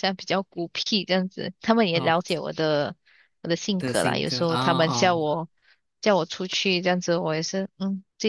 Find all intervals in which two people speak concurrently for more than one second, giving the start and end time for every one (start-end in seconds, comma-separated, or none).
3.8-5.2